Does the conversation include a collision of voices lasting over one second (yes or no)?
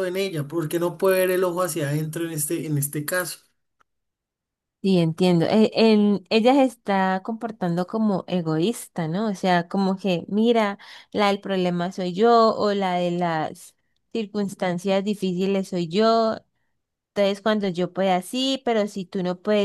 no